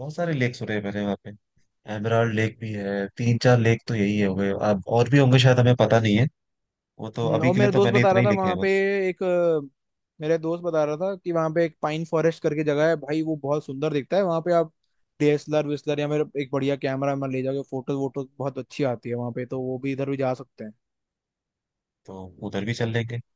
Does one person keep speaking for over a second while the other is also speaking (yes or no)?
yes